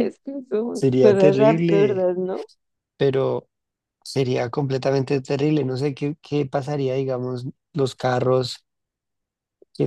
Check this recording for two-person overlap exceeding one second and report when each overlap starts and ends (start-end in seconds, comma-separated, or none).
0.7-2.1